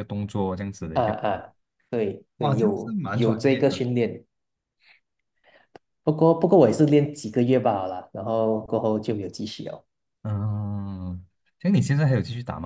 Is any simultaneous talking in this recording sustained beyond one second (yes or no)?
yes